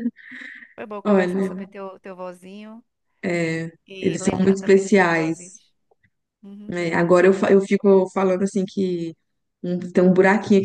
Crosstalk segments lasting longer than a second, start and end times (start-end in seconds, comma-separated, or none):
3.9-5.4